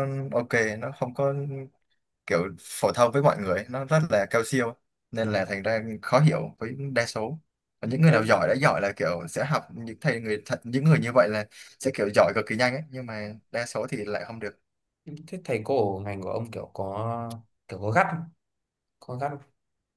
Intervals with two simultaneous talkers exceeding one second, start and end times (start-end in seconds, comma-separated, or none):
none